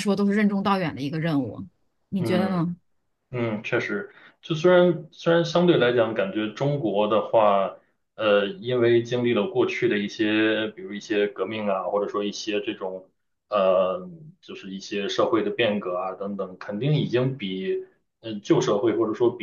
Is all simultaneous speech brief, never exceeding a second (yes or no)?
yes